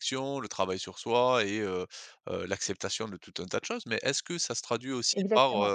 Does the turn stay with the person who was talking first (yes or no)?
yes